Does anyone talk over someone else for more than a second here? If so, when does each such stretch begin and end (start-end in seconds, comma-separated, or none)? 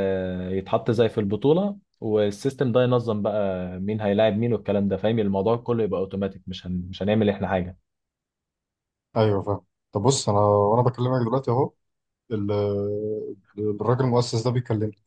none